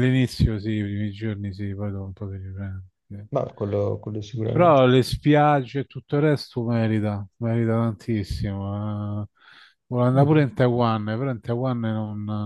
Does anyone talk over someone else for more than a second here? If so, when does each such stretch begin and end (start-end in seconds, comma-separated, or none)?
none